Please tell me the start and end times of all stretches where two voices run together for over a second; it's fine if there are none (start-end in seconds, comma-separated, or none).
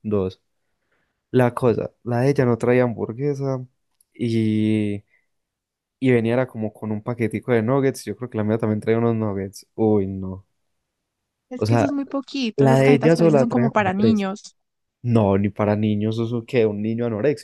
12.6-14.2